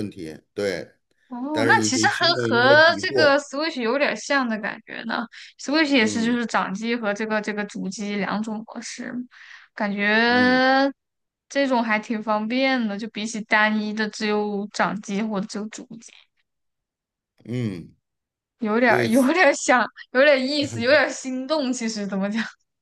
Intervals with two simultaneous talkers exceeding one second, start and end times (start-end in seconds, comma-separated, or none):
1.5-3.4